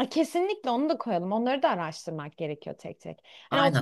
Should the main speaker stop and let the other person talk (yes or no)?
no